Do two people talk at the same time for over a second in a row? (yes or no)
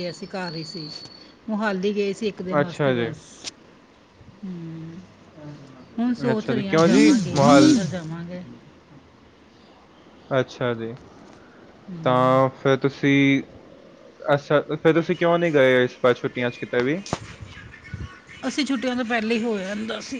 yes